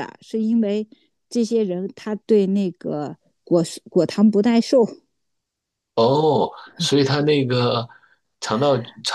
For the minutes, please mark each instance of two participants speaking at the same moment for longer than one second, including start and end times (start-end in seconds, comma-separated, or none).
none